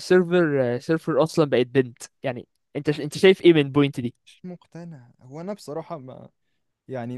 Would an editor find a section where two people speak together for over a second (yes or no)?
no